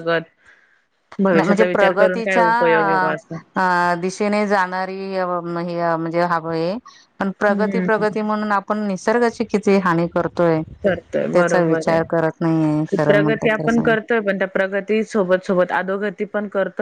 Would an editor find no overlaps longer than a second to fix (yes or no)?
no